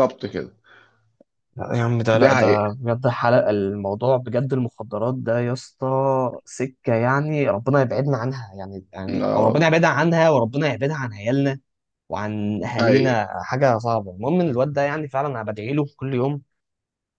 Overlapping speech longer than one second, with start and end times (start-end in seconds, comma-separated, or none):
none